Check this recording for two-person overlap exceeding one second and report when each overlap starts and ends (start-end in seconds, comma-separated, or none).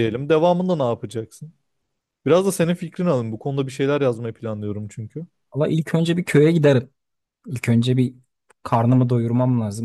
none